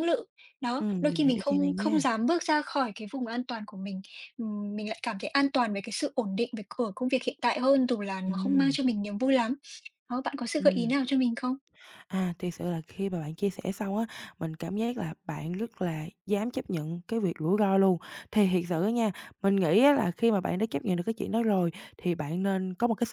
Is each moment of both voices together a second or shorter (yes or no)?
no